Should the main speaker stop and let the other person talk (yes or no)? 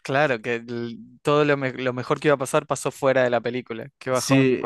yes